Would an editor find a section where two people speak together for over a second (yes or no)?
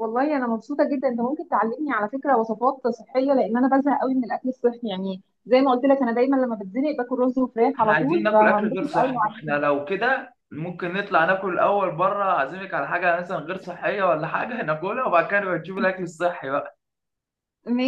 yes